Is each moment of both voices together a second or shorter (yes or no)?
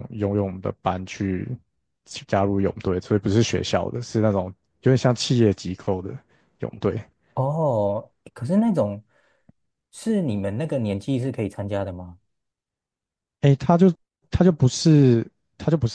yes